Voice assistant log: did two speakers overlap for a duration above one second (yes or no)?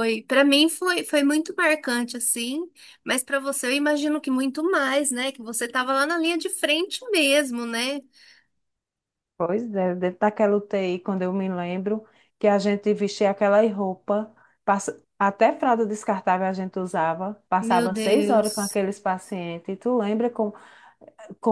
yes